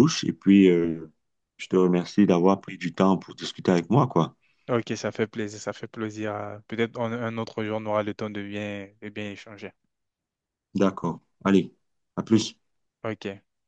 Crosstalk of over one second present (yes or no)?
no